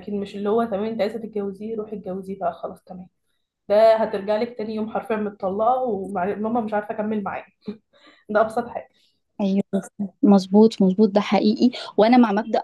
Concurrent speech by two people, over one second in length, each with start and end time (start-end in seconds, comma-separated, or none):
none